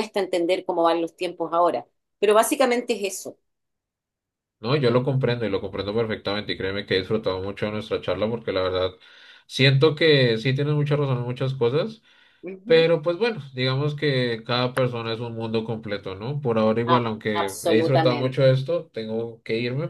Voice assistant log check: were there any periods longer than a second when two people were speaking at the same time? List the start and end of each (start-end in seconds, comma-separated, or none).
16.9-18.6